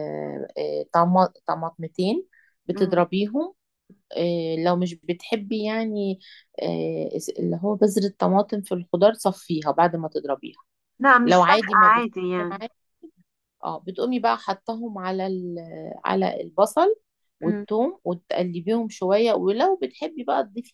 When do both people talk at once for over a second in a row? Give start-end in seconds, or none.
11.2-12.6